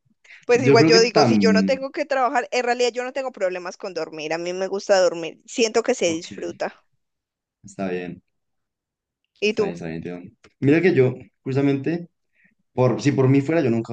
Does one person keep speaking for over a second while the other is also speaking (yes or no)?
yes